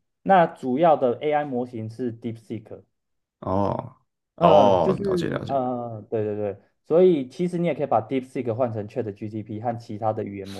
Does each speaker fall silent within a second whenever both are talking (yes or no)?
no